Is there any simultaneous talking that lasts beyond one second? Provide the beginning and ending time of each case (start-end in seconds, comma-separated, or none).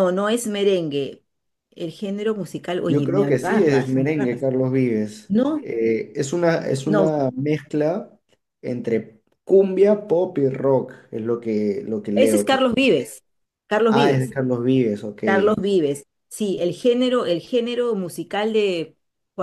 2.9-4.4